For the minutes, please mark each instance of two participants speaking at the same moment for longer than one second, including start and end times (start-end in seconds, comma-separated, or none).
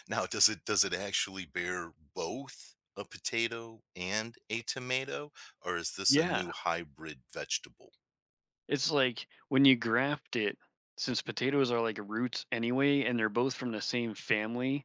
none